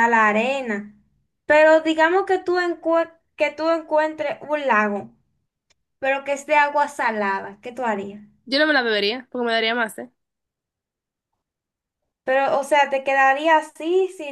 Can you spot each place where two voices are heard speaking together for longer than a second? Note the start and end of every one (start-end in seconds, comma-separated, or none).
none